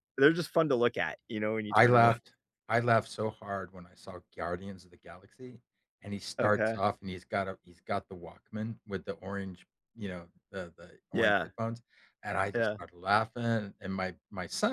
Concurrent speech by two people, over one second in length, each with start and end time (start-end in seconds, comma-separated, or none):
none